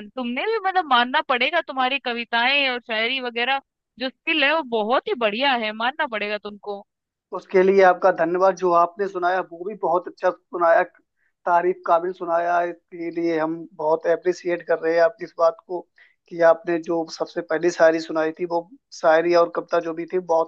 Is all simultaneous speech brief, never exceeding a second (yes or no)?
yes